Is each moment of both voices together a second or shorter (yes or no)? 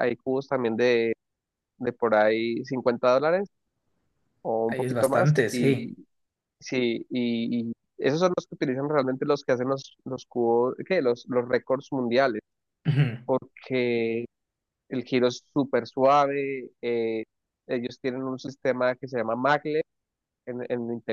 no